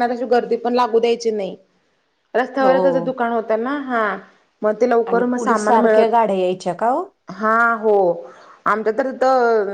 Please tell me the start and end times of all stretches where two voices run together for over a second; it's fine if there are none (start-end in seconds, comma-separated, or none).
5.1-7.0